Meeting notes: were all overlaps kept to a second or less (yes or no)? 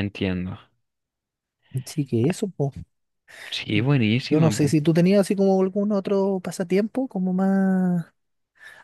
yes